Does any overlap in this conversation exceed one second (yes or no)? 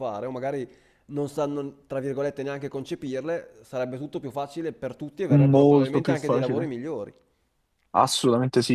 yes